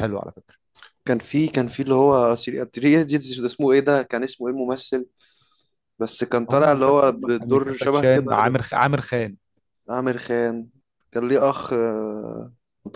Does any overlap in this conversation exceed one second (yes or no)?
yes